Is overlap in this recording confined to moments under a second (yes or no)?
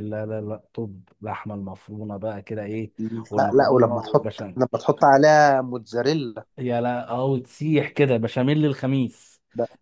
no